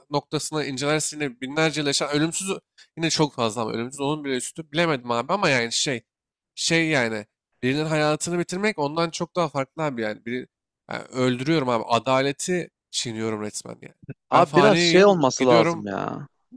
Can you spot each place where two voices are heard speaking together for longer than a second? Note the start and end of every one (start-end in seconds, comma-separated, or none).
14.3-15.8